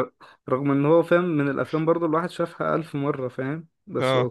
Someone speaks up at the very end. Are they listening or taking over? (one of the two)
listening